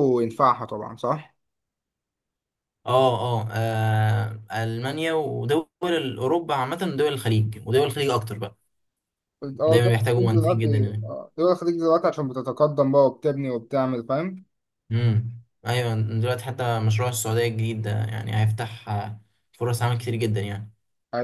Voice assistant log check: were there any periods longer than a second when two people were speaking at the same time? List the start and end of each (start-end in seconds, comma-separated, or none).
9.7-11.0